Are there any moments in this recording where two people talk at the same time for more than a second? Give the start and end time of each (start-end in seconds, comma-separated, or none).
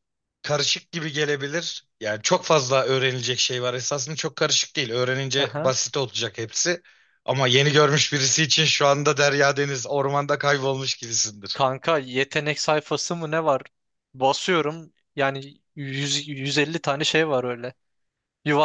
none